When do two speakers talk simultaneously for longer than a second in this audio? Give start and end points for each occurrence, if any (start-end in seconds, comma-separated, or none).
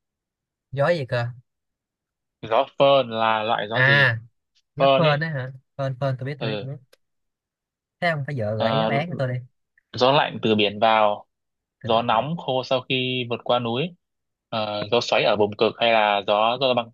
none